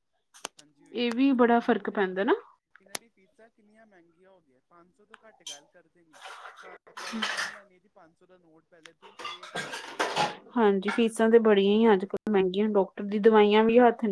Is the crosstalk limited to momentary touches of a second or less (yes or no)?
no